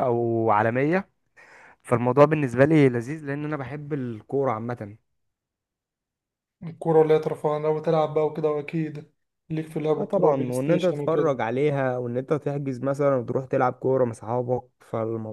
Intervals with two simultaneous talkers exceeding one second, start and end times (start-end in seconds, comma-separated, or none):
10.0-11.3